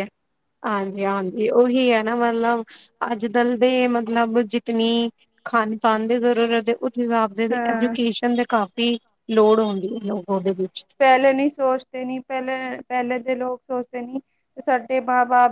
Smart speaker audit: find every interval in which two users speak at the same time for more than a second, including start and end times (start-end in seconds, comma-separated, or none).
none